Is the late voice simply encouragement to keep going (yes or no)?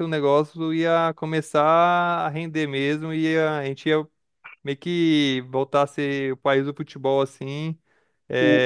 yes